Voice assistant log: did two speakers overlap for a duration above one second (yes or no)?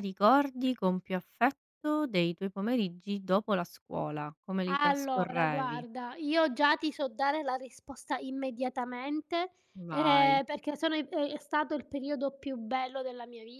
yes